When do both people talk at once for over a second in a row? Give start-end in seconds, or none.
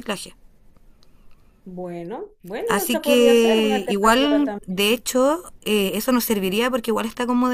2.7-5.0